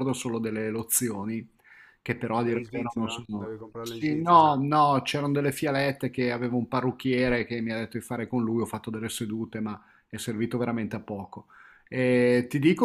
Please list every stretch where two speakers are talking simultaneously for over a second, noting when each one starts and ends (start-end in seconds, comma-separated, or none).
2.4-4.5